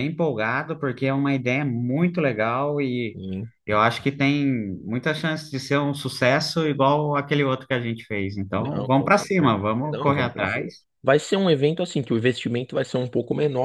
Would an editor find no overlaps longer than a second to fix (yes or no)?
no